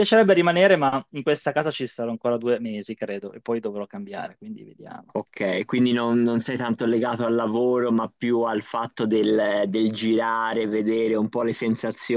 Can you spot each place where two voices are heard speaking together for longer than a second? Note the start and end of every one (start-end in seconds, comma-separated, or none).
none